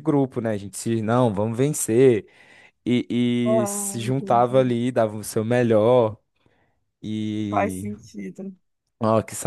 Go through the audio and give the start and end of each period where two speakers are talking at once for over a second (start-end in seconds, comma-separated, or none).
3.4-4.7